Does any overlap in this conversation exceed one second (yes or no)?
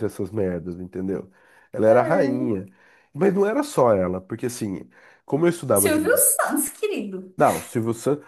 no